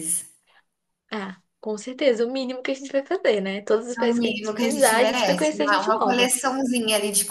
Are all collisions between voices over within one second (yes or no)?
no